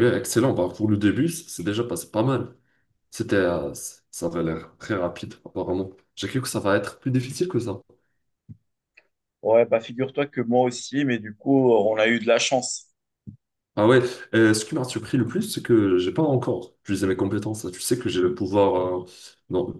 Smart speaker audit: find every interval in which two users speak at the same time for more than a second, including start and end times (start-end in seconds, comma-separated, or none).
none